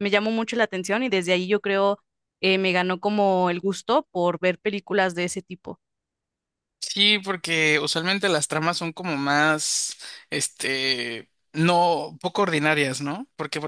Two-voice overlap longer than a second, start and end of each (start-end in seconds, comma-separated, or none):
none